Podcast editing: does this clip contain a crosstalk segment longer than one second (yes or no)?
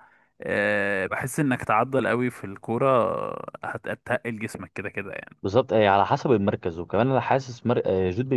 no